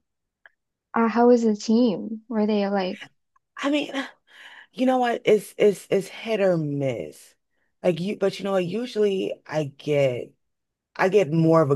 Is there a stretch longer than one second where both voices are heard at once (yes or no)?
no